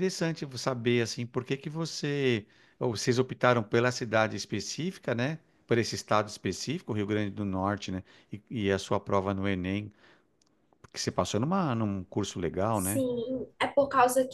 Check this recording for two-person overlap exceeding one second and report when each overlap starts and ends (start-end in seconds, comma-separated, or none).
none